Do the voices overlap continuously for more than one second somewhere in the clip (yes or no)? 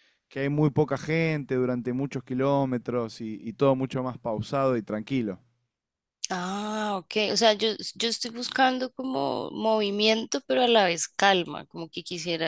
no